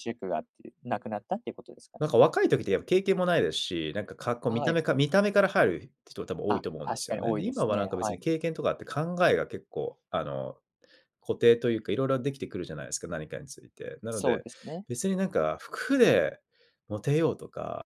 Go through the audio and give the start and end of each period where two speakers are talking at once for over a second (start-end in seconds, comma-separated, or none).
6.5-8.2